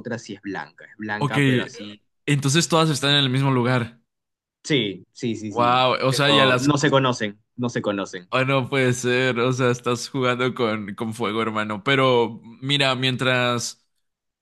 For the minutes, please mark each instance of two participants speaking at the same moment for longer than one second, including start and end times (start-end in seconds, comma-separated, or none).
5.5-6.9